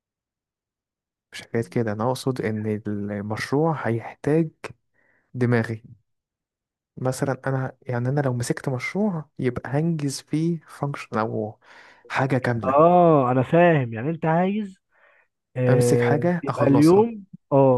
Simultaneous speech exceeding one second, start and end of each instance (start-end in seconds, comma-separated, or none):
15.7-17.1